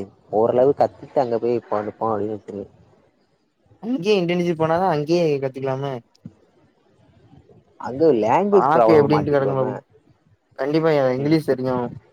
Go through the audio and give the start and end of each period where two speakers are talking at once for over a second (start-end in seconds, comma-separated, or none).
8.5-9.7